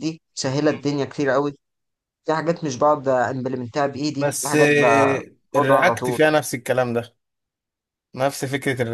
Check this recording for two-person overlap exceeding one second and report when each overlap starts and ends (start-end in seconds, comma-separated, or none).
4.2-6.2